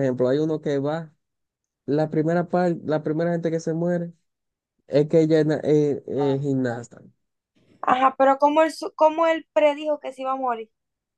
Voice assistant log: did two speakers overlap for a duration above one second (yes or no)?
no